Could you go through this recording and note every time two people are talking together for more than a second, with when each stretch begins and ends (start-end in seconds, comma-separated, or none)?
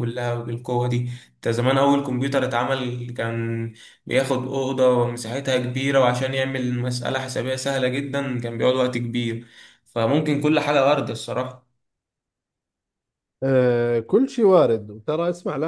none